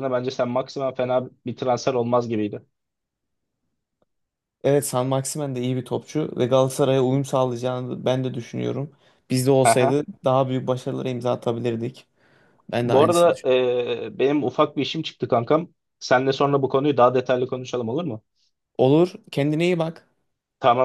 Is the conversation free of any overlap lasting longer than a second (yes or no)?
yes